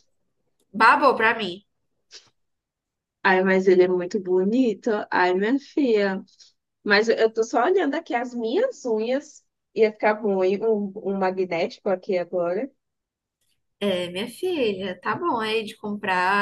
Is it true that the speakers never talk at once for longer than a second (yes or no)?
yes